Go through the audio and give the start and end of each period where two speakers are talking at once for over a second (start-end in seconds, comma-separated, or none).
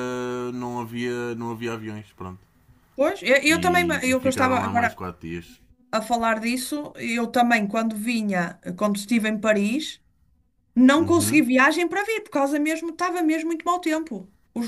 3.5-5.0